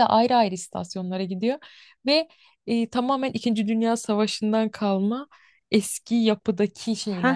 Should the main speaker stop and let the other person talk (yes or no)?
yes